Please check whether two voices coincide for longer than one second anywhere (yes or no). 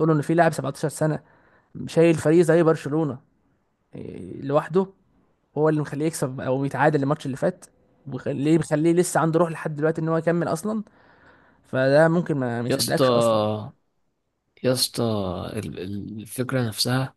no